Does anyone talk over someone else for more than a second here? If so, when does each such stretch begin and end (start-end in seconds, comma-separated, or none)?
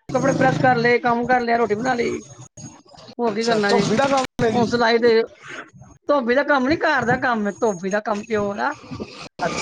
none